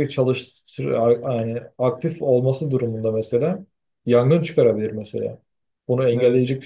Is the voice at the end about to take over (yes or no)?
no